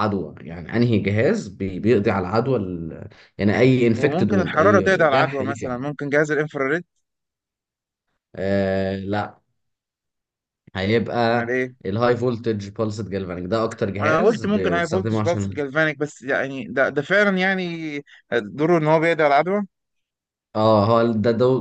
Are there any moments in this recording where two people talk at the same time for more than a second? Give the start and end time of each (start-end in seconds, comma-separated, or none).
4.0-5.8, 14.0-15.5